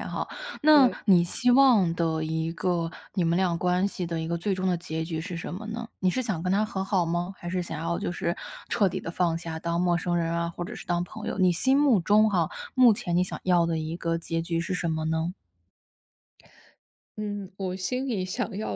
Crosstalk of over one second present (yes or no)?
no